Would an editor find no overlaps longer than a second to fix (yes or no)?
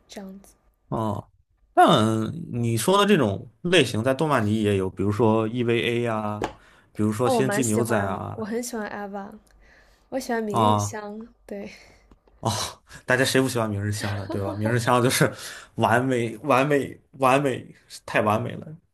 no